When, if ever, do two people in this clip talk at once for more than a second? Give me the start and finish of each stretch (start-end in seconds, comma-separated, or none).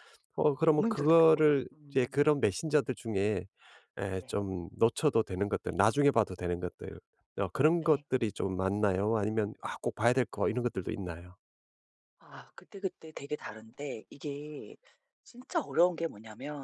0.7-2.2